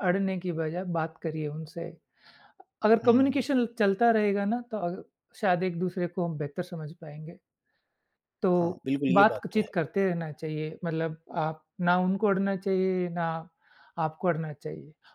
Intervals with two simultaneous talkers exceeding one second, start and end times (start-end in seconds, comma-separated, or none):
none